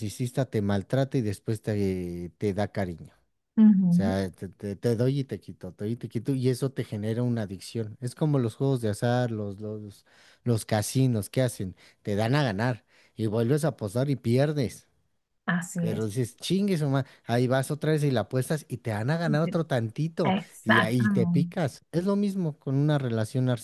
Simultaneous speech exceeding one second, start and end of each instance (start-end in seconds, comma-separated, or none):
20.2-21.6